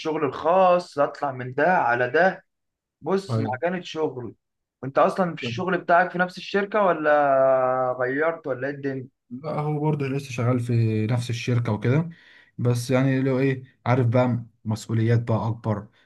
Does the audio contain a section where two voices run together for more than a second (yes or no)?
no